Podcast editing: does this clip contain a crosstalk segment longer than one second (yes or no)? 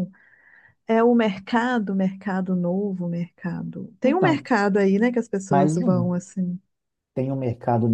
no